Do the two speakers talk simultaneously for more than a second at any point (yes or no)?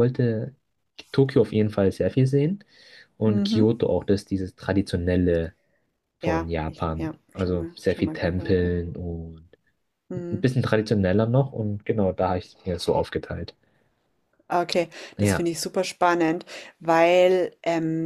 yes